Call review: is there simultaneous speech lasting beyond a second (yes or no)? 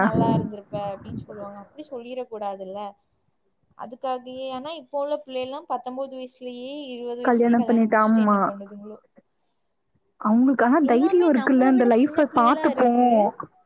yes